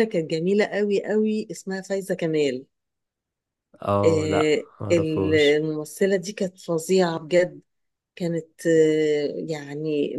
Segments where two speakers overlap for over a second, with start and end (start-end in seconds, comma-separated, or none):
4.0-5.6